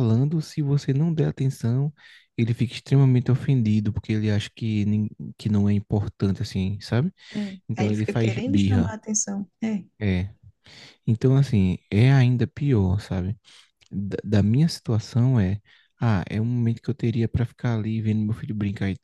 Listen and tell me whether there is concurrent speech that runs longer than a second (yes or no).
yes